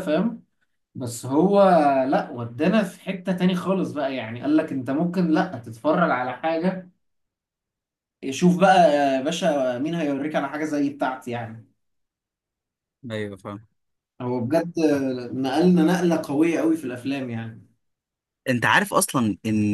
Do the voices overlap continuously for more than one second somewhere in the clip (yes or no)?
no